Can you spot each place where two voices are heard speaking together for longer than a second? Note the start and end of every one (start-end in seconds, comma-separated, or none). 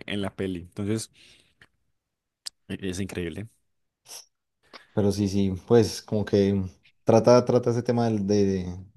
none